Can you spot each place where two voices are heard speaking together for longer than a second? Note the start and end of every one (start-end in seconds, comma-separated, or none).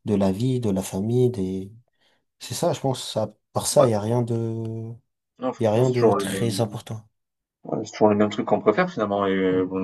5.6-6.8